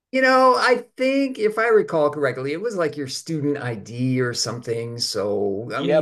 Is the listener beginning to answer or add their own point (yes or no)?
yes